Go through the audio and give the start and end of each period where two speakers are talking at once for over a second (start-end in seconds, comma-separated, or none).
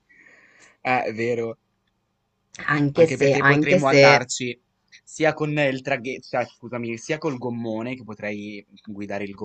2.9-4.2